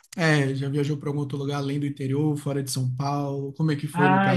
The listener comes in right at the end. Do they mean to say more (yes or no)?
yes